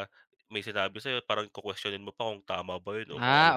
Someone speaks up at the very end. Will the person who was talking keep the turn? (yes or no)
no